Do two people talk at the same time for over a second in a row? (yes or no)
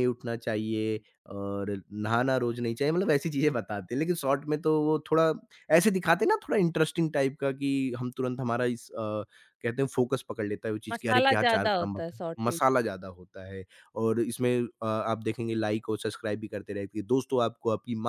yes